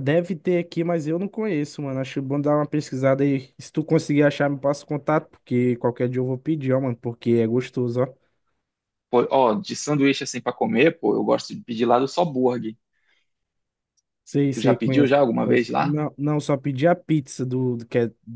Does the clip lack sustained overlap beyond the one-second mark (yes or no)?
no